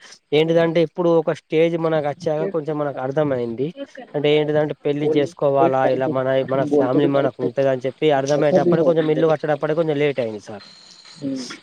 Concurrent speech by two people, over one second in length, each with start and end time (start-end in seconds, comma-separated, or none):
6.4-8.9